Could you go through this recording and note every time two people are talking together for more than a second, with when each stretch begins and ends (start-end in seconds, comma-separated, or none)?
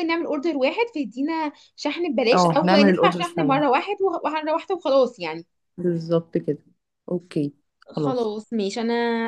2.3-3.6